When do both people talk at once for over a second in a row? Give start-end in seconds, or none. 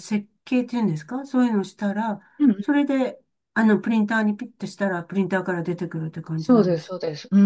none